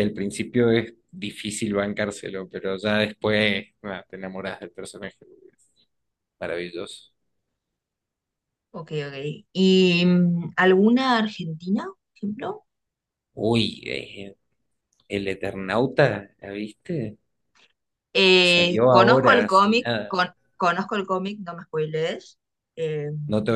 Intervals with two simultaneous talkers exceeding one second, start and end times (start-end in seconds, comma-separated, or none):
18.4-20.2